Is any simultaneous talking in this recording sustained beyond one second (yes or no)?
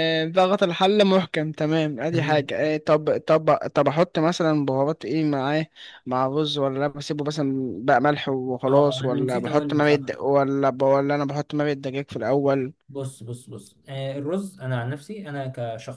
yes